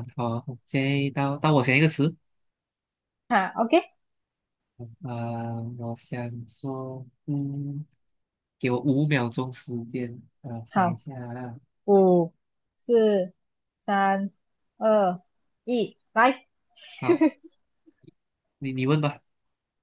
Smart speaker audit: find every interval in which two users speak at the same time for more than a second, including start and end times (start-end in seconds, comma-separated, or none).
none